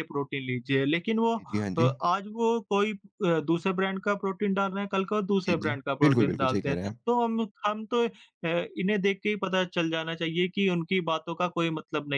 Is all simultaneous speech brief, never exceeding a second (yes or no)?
no